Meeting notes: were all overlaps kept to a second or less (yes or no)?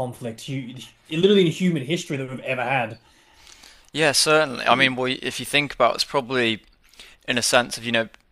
yes